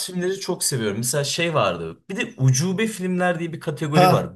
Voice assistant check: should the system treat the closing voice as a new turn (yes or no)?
yes